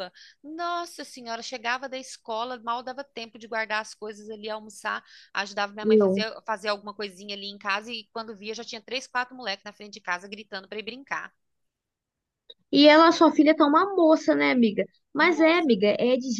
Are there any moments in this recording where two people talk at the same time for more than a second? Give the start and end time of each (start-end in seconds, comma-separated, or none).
none